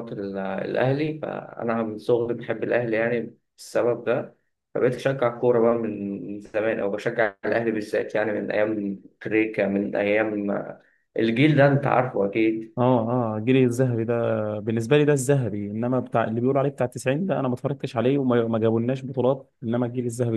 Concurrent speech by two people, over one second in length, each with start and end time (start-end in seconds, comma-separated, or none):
none